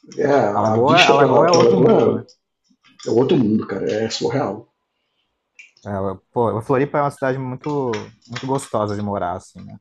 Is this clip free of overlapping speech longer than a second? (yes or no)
no